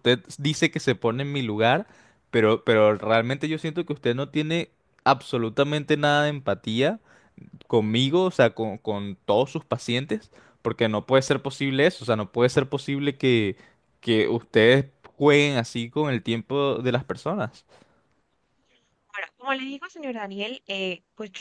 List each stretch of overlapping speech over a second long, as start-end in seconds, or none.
none